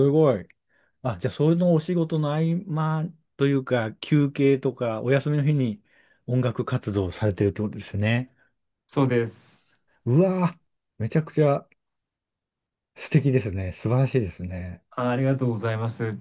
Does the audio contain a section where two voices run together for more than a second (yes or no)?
no